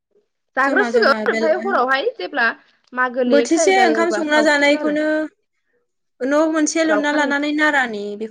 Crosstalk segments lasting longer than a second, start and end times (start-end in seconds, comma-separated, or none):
3.3-5.0